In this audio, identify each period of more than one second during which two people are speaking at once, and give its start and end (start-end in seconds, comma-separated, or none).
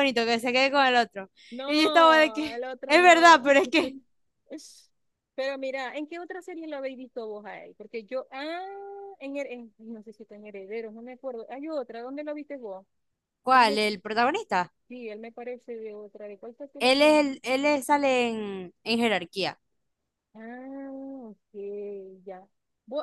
1.7-3.4